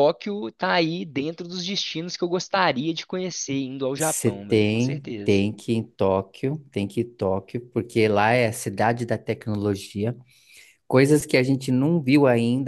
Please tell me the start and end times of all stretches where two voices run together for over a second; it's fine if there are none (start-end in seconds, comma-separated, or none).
4.0-5.4